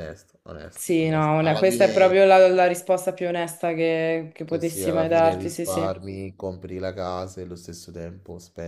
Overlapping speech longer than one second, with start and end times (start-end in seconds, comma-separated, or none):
0.7-2.2, 4.4-6.0